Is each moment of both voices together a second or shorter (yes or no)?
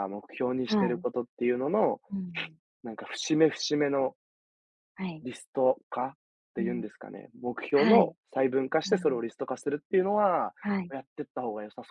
yes